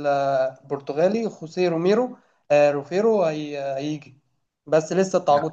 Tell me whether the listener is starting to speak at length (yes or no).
no